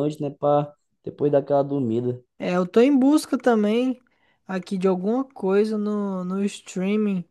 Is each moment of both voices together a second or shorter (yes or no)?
yes